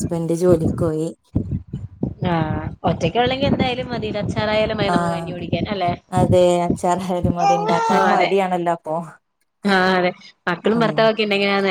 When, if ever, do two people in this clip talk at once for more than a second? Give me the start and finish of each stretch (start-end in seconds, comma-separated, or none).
none